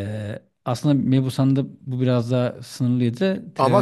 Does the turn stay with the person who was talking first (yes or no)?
no